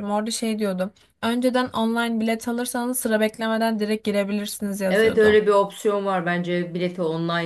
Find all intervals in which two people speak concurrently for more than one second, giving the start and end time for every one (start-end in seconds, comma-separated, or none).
none